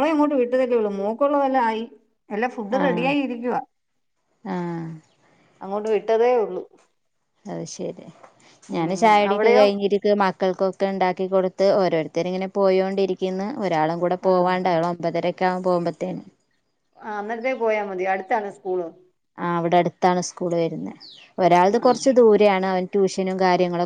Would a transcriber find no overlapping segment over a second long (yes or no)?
yes